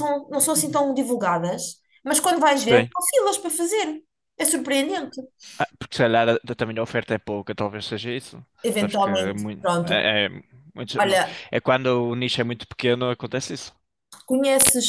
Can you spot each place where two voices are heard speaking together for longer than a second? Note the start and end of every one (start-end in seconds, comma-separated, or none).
8.6-10.1